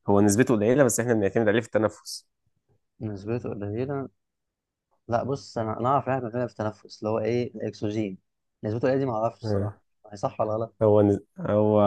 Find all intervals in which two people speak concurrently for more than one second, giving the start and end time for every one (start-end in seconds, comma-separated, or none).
none